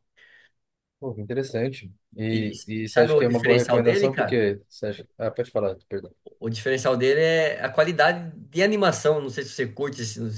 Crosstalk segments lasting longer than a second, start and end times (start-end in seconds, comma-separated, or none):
2.3-4.4